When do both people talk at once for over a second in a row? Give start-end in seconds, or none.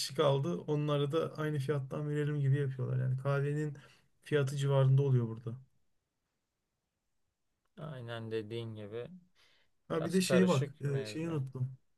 9.9-11.4